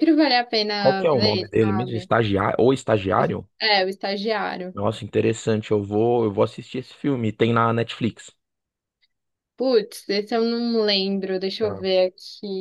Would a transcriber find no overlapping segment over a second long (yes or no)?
no